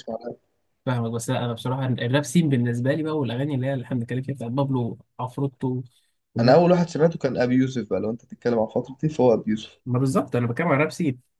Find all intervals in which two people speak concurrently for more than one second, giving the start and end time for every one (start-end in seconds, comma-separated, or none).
none